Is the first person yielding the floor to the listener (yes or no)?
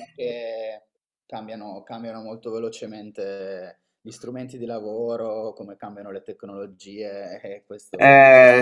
yes